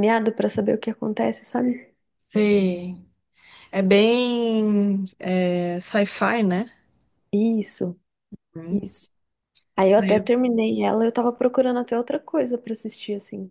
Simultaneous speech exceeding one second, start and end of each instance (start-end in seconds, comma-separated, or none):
none